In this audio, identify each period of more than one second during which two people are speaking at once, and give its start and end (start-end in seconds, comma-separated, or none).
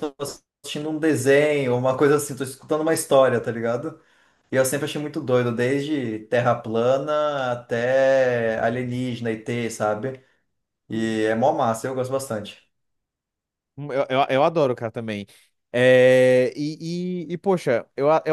none